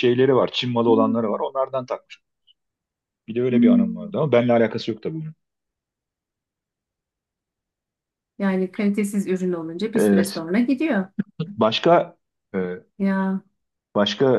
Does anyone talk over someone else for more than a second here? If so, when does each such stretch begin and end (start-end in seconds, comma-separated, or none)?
none